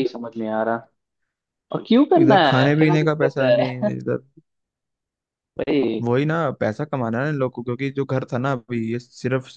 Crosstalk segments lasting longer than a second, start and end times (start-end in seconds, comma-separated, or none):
2.2-3.9